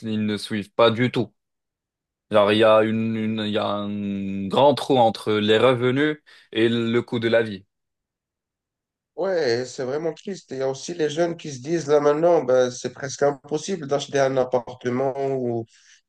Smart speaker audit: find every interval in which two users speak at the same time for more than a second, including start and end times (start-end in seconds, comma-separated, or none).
none